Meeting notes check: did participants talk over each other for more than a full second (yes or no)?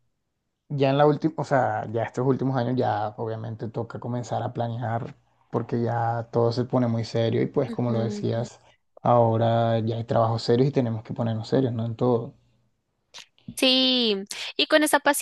no